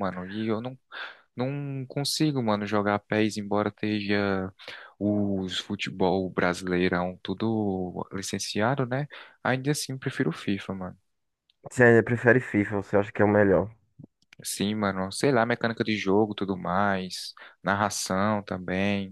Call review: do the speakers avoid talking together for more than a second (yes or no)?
yes